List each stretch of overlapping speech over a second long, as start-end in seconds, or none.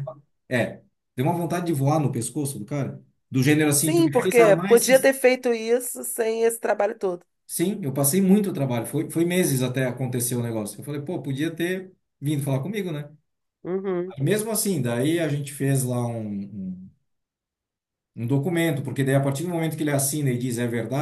3.8-5.1